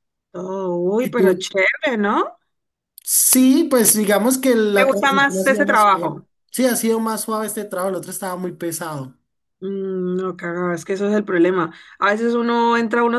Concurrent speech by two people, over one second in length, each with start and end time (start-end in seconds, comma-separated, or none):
4.8-6.2